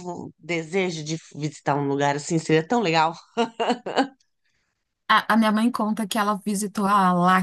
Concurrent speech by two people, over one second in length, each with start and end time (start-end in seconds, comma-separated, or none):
none